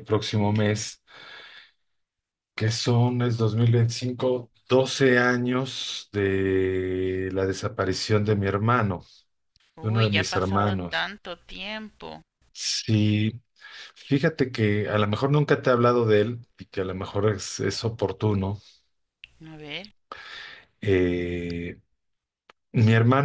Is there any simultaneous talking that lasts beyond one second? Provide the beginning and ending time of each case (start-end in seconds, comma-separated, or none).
9.8-11.1